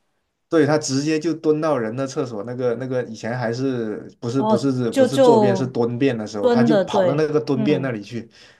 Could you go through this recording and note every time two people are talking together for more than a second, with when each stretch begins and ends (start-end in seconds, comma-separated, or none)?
4.4-5.7, 6.4-7.9